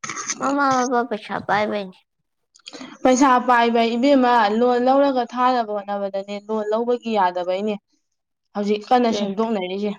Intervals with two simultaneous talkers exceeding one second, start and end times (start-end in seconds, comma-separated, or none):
none